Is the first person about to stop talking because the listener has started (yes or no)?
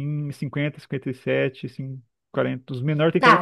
yes